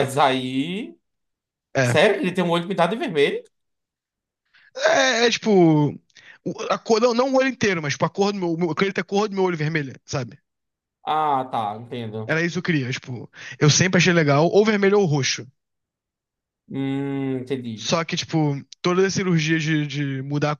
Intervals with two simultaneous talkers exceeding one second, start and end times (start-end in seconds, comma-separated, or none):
none